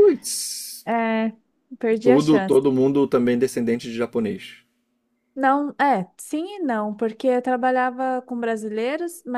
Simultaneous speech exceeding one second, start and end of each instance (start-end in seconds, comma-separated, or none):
none